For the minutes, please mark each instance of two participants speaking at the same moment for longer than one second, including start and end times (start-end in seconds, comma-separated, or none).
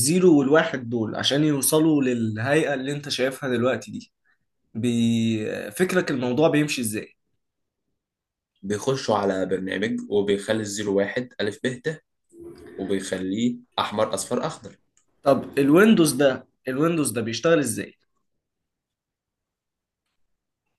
none